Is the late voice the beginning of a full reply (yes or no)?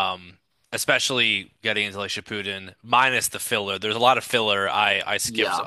no